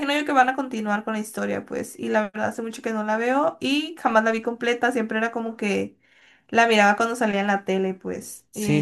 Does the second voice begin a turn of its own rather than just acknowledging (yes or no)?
yes